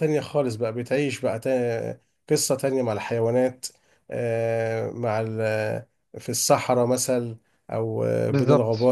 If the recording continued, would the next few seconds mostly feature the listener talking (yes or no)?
no